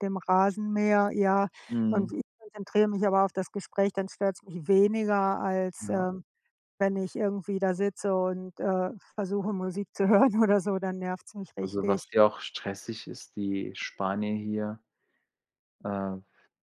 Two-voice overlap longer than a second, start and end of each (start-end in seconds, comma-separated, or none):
none